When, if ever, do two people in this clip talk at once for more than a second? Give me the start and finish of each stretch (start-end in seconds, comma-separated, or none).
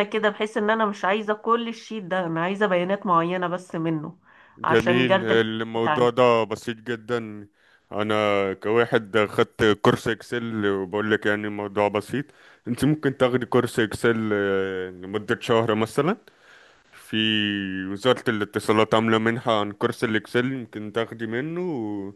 4.6-6.1